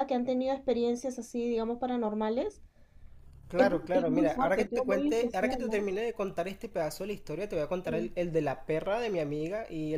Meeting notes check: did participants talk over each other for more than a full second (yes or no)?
yes